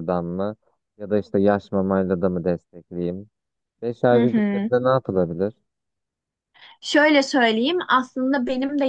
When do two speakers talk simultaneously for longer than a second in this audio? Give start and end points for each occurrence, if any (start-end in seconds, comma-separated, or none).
none